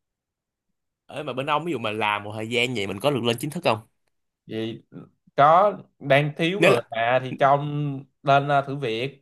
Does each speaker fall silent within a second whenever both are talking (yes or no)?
yes